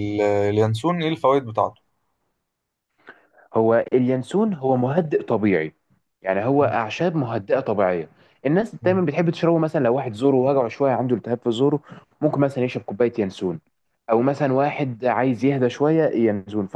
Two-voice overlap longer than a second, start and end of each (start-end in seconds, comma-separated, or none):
none